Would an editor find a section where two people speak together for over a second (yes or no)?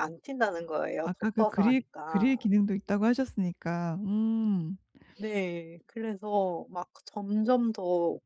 yes